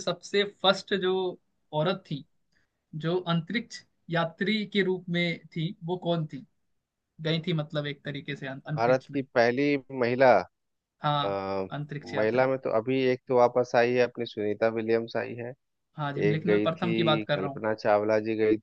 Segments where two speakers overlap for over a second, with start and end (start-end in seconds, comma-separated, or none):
16.3-17.6